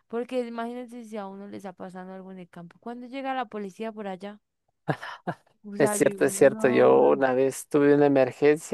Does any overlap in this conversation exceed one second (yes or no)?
yes